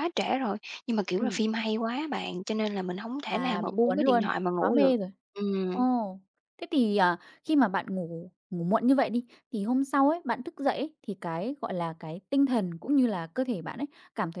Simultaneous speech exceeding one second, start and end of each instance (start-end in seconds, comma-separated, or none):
3.3-4.9